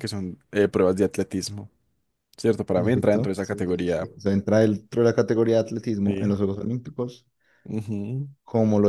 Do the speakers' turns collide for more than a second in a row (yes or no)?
yes